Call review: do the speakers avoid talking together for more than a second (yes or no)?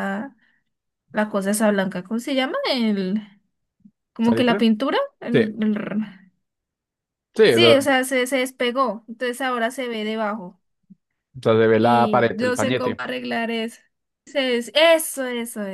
no